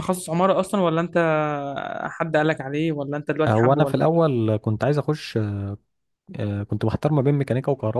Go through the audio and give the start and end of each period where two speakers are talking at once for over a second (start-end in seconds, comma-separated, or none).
none